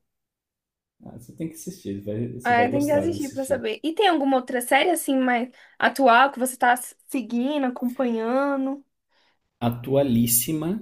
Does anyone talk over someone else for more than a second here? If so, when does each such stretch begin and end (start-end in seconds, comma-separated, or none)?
2.4-3.7